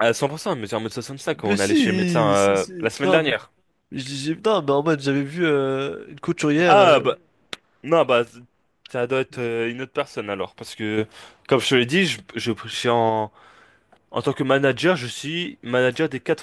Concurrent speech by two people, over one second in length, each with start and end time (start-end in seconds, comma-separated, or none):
1.4-3.3